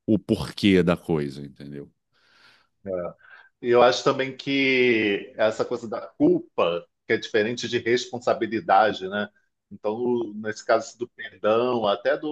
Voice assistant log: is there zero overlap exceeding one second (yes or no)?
yes